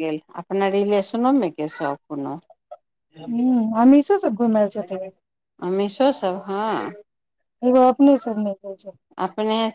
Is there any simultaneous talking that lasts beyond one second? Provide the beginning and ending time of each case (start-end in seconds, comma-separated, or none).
none